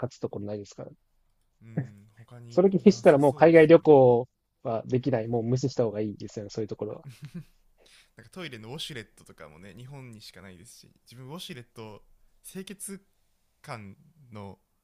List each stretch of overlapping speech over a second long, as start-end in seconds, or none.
2.5-3.9